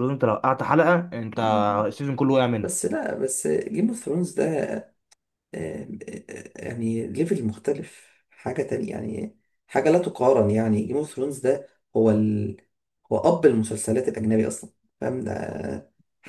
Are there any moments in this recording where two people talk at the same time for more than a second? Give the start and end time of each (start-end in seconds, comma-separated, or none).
none